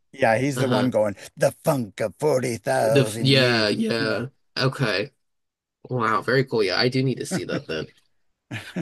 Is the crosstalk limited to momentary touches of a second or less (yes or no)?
no